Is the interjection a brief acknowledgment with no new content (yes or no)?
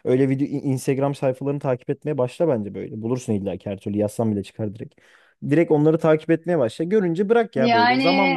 yes